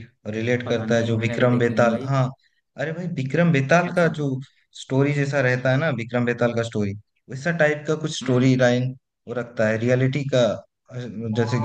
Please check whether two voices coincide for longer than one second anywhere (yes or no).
yes